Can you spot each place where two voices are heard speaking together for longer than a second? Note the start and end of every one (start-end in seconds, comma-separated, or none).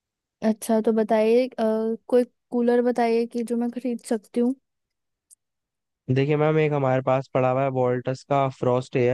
none